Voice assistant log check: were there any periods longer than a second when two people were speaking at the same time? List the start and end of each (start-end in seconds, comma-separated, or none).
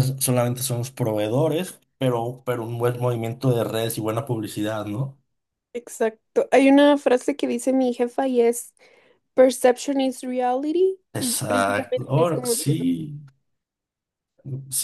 11.1-12.8